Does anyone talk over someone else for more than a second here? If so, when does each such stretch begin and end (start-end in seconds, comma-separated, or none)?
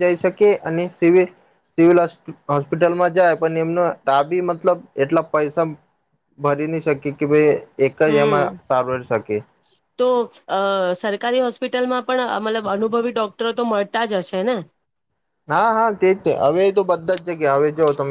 none